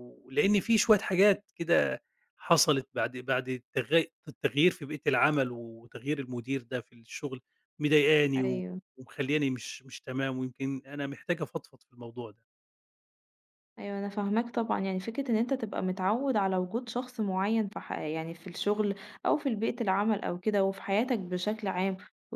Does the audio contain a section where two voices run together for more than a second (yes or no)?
no